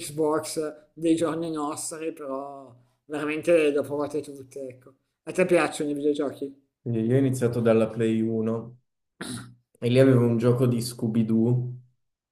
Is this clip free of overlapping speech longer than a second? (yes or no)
yes